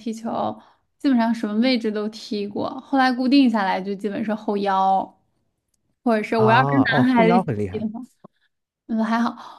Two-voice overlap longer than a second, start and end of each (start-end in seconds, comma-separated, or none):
6.3-7.8